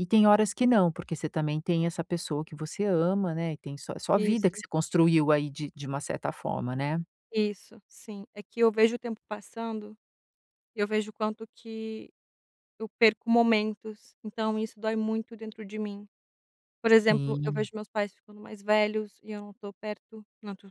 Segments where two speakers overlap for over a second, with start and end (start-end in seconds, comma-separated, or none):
none